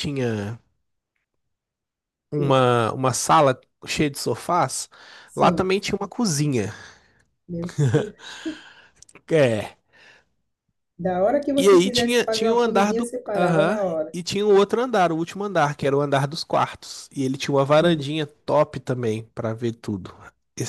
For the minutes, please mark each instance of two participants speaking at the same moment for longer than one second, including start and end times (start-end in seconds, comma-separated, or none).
11.6-14.2